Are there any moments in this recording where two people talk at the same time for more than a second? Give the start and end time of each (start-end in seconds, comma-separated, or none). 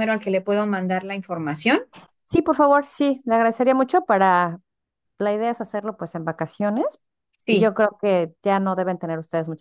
none